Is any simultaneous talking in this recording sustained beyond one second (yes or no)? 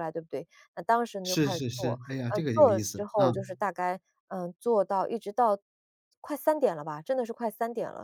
yes